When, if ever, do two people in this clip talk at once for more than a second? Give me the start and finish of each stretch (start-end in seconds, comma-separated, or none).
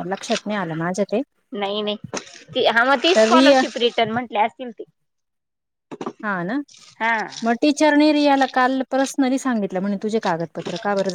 none